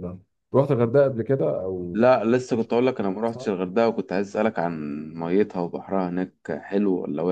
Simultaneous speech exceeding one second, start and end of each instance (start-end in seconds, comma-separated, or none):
none